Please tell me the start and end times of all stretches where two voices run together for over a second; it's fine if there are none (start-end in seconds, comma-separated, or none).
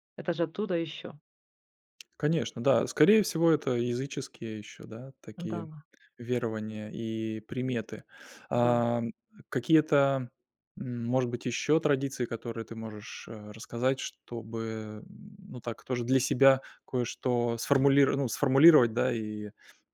none